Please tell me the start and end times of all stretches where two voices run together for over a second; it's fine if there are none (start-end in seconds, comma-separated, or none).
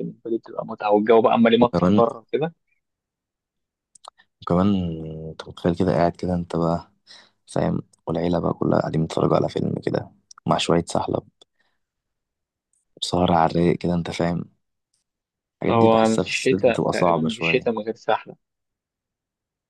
15.7-17.8